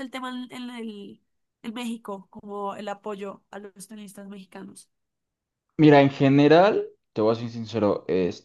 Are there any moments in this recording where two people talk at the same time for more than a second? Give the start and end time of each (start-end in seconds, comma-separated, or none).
none